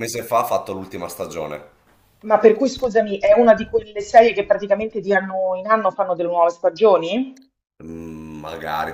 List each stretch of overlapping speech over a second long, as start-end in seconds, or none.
none